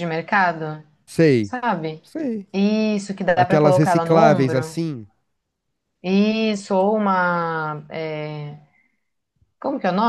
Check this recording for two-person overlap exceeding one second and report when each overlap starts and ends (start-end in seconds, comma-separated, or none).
3.4-4.8